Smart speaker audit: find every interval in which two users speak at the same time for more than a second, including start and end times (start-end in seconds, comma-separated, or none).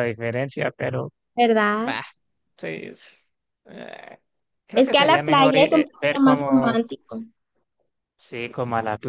4.7-6.8